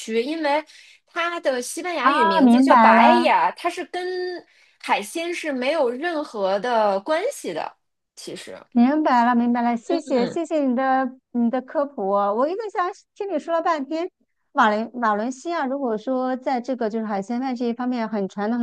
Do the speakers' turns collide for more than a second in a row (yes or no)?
yes